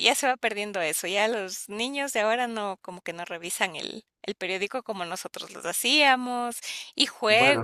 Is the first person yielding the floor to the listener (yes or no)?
yes